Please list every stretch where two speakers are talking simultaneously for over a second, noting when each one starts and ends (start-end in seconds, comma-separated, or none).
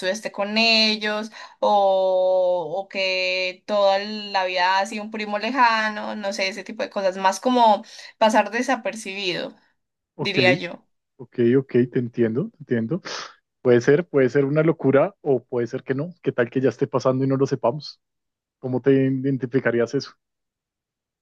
none